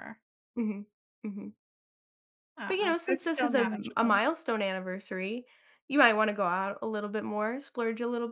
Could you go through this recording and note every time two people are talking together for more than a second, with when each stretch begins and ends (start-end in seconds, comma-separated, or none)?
2.7-4.2